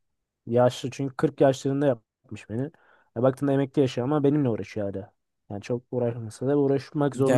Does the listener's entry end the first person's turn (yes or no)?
yes